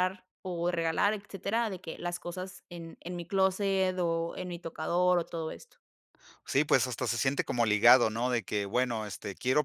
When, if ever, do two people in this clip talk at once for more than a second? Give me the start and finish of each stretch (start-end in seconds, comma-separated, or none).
none